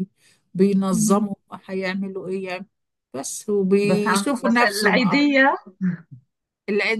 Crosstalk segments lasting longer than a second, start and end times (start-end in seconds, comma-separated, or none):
3.8-5.3